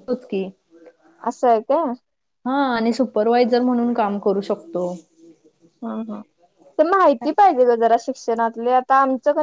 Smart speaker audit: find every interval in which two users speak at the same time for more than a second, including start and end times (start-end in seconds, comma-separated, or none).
none